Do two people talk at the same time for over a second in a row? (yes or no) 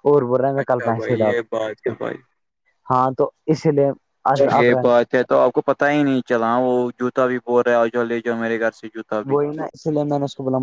yes